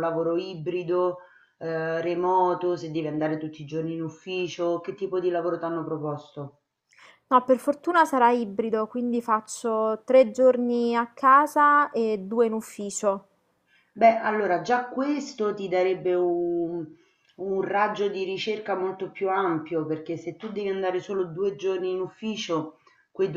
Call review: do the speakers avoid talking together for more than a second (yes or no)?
yes